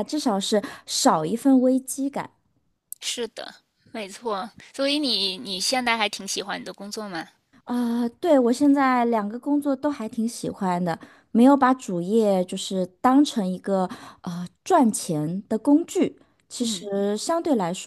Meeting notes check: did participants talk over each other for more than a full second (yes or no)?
no